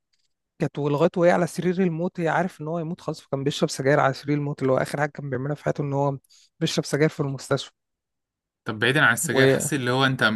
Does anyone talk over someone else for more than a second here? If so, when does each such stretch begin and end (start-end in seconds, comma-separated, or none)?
none